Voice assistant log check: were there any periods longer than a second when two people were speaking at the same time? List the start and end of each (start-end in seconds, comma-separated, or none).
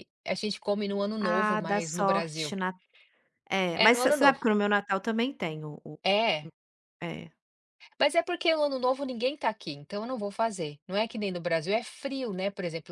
1.3-2.5